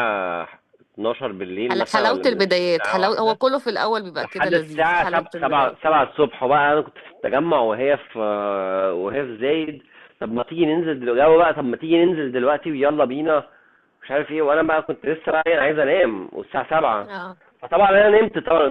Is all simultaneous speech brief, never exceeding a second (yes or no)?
no